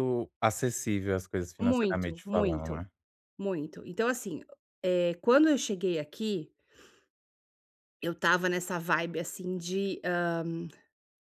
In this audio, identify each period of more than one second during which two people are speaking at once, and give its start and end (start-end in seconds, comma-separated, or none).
1.6-2.8